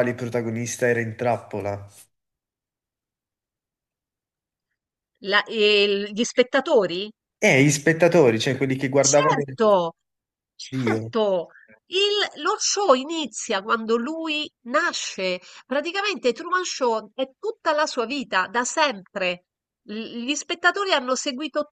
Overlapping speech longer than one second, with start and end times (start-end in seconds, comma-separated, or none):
none